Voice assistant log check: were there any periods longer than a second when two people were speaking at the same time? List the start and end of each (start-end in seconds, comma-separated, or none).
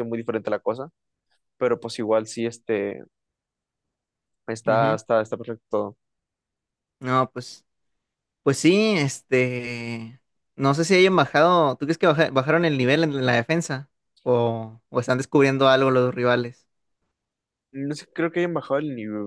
none